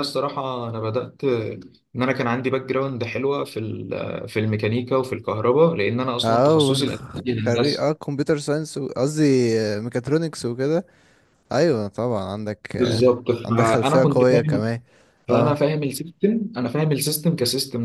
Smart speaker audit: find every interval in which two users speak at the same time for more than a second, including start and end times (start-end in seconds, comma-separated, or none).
12.8-14.6